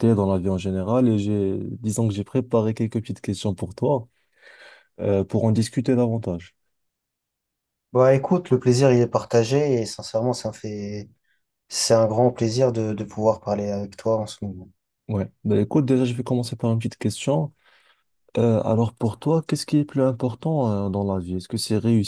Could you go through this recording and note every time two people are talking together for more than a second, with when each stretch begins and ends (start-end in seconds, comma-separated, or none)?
none